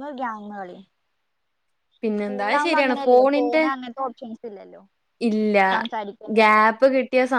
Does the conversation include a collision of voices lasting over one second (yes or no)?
yes